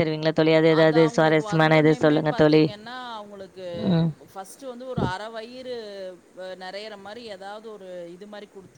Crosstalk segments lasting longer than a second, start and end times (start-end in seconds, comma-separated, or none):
0.8-2.6